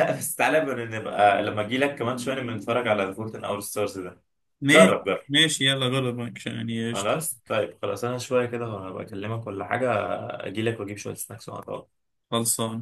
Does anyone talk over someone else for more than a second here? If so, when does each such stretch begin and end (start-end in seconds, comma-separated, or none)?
none